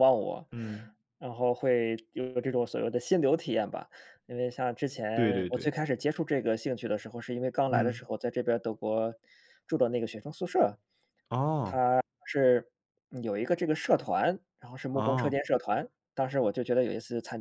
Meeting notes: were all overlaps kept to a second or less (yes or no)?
yes